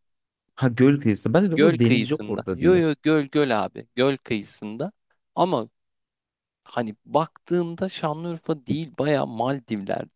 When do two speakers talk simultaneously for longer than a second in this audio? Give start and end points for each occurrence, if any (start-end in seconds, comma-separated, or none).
1.5-2.8